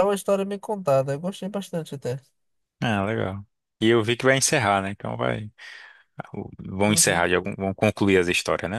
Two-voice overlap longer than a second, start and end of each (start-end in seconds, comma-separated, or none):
none